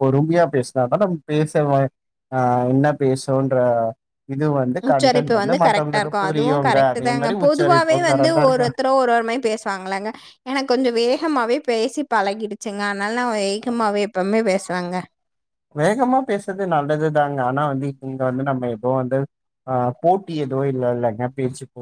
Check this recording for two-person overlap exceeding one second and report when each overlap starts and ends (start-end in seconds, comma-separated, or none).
4.9-6.6